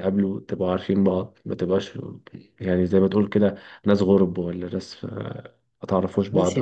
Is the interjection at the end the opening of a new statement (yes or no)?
yes